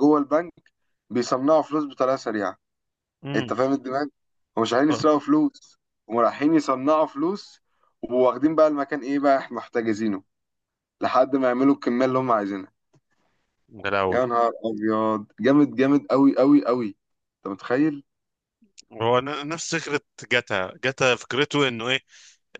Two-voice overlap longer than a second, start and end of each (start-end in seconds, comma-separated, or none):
none